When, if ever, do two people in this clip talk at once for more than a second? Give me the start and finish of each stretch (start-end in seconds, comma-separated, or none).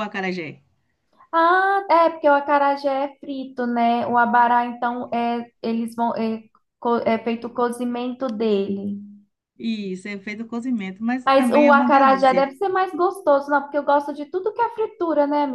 11.2-12.5